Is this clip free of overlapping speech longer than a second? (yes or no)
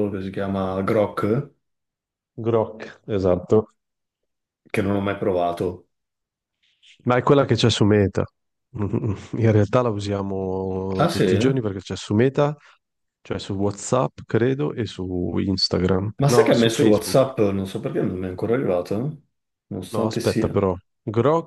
no